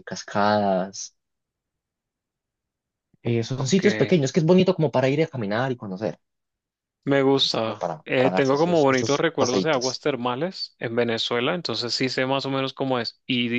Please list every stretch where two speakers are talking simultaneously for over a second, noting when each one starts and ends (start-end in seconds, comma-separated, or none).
7.5-10.0